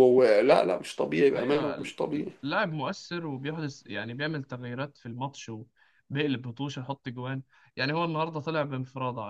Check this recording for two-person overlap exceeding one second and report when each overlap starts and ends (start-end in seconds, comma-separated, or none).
none